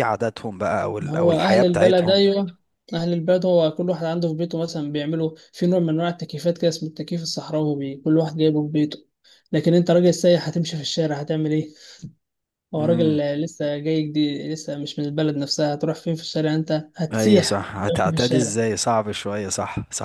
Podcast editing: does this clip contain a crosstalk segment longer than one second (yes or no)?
yes